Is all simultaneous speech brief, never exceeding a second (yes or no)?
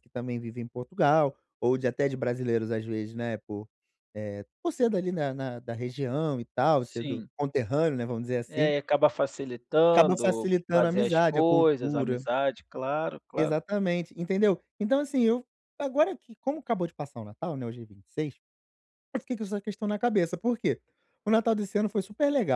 no